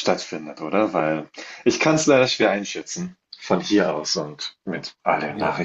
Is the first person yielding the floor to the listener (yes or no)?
yes